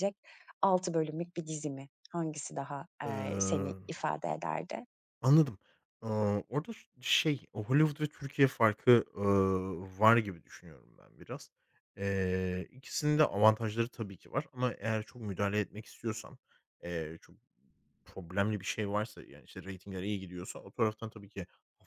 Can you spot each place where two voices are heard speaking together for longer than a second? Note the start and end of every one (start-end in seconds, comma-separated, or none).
none